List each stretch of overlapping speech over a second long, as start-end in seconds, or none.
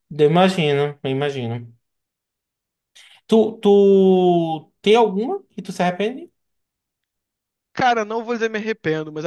none